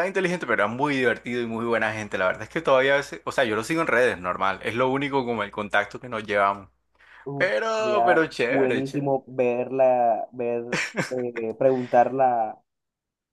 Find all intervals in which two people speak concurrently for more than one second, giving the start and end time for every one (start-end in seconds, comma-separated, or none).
7.4-9.1